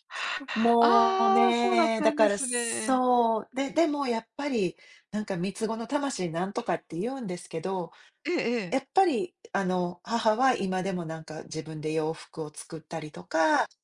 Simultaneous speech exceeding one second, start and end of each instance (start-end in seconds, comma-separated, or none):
0.8-3.0